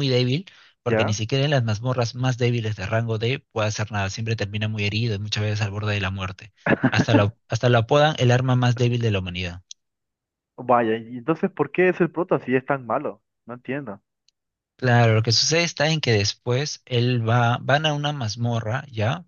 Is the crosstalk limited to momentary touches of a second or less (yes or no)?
yes